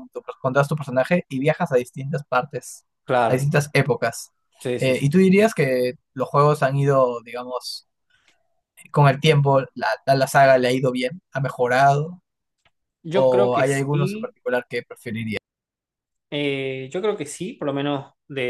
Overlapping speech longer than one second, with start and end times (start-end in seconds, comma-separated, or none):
13.1-14.3